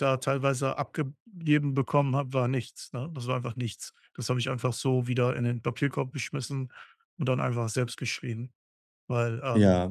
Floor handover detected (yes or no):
no